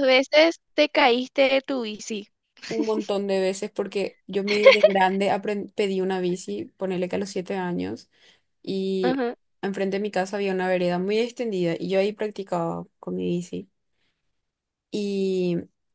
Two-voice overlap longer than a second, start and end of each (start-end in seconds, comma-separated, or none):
none